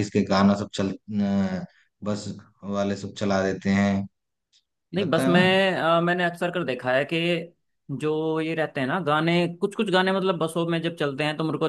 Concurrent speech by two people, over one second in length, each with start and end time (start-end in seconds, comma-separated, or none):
none